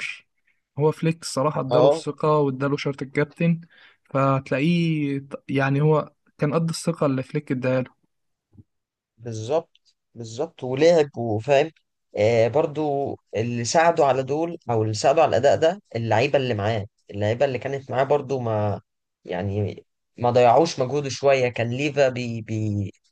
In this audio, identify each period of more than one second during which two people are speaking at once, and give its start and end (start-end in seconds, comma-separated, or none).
none